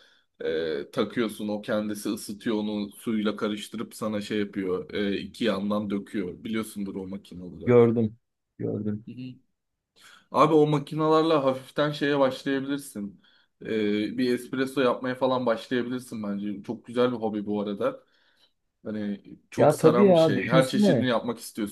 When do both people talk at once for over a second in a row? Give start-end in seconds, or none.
19.6-21.1